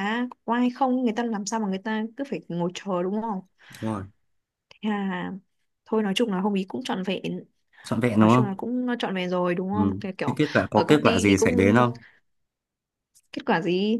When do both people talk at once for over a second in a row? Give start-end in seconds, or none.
9.7-11.7